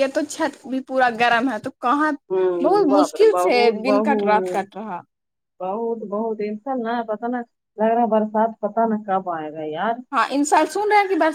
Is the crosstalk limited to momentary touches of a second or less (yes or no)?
no